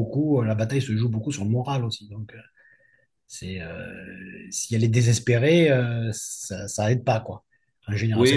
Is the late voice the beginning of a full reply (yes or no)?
yes